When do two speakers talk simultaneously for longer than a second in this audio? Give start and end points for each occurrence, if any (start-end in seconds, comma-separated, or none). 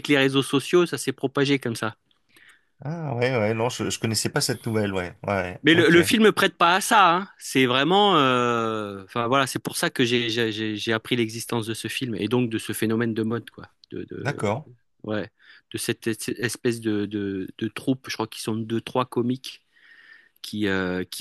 none